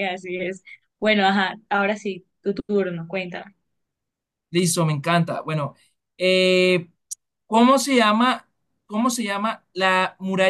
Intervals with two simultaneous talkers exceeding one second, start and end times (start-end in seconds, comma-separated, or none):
none